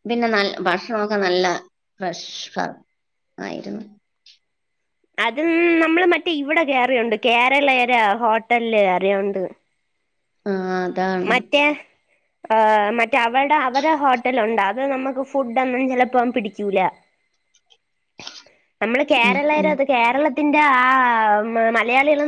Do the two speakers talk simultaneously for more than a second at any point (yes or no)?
no